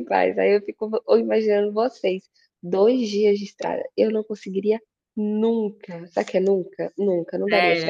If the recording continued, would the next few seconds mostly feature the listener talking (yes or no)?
yes